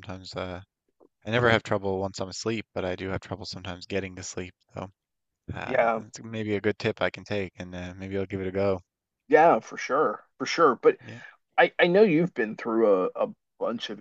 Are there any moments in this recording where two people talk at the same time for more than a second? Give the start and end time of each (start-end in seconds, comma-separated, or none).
none